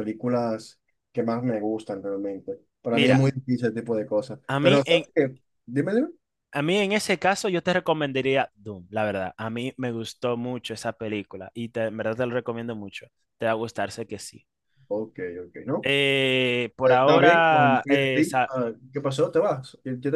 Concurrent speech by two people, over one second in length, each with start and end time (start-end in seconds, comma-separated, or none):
16.8-18.5